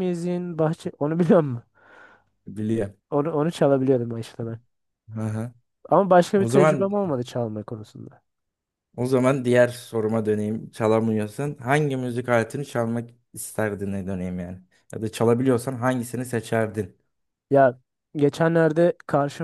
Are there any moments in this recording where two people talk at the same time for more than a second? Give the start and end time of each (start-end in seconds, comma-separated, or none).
none